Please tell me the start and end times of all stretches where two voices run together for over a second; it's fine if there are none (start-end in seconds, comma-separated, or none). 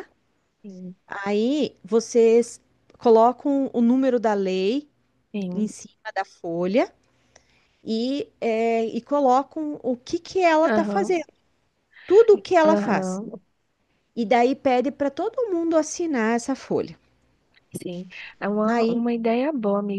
none